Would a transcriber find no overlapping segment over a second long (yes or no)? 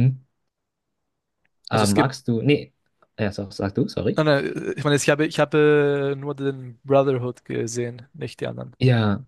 yes